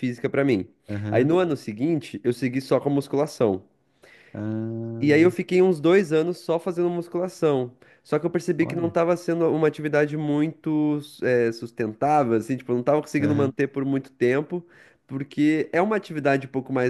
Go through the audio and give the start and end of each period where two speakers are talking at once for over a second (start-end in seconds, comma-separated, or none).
none